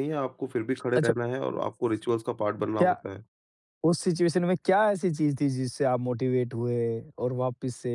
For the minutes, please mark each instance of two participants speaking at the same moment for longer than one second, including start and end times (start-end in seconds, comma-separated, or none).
none